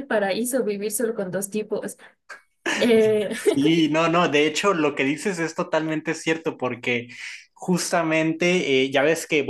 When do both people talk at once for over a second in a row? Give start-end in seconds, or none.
none